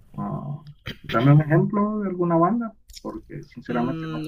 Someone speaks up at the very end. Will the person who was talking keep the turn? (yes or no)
no